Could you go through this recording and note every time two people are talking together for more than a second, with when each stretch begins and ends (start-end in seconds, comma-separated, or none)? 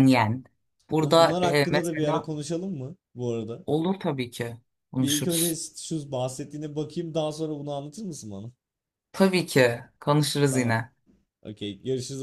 1.0-2.3